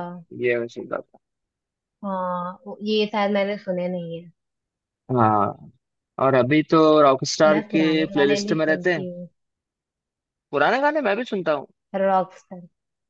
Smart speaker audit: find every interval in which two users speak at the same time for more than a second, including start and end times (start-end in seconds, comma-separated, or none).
7.5-9.0